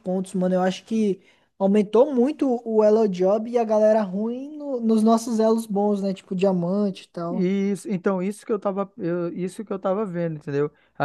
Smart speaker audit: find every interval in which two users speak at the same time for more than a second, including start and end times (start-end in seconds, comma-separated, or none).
none